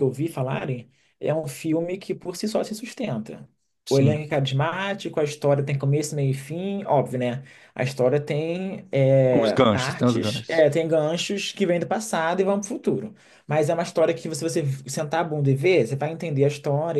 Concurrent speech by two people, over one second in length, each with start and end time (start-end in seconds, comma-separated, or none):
9.3-10.7